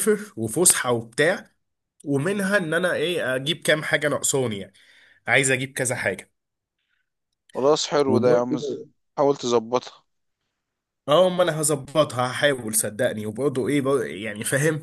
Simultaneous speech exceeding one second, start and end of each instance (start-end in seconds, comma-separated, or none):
none